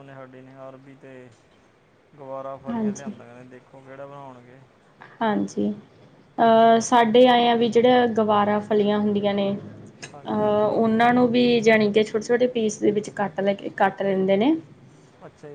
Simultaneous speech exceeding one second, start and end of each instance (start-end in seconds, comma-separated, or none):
none